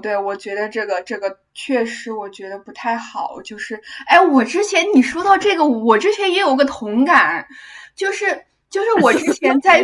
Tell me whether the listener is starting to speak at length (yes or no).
no